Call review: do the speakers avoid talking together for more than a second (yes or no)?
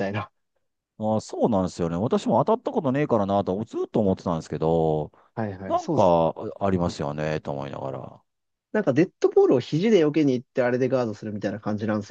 yes